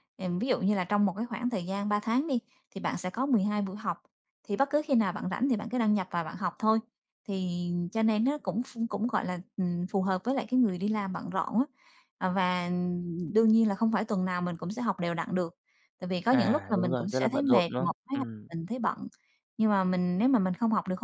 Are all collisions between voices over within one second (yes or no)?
no